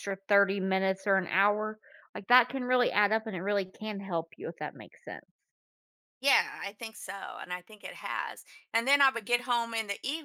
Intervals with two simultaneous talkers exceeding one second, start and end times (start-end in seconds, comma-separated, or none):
none